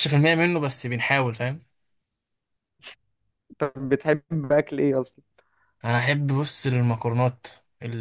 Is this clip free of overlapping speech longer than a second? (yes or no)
yes